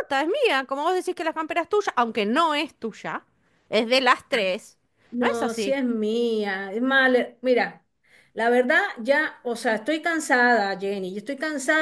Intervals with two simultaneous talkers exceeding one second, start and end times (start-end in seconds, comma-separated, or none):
none